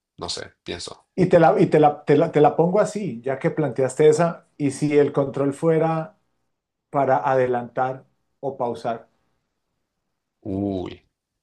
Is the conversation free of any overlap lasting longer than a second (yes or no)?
yes